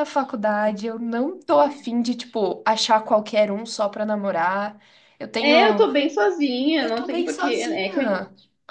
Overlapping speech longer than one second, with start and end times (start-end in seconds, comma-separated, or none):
6.8-8.2